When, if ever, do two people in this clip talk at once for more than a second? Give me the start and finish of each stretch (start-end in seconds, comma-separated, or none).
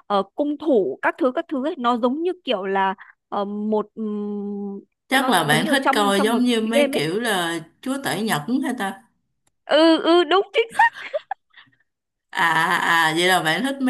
5.1-7.0